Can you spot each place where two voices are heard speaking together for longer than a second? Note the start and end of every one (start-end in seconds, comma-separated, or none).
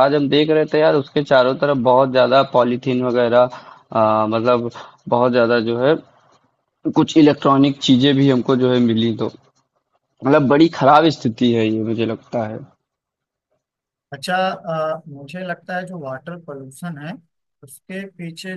none